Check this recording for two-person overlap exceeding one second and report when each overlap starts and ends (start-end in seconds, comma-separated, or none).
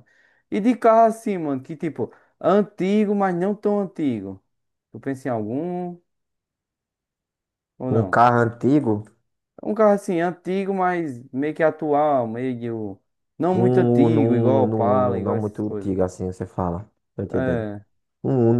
13.5-16.0